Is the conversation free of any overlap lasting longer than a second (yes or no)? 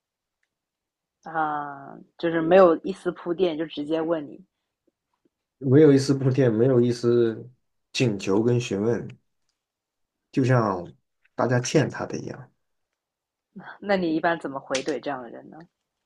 yes